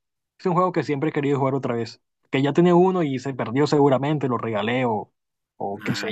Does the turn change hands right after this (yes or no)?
yes